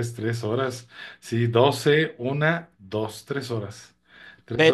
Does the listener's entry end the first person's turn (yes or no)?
yes